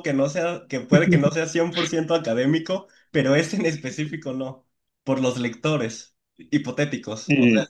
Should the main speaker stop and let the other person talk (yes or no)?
no